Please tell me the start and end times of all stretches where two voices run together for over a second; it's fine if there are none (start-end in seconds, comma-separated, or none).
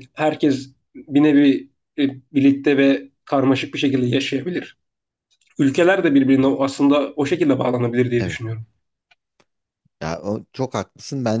none